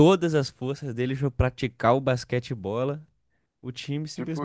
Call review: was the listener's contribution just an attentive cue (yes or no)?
yes